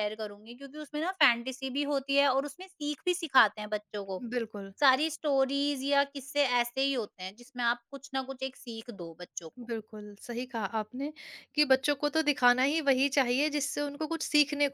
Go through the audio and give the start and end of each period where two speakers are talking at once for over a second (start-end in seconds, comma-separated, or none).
none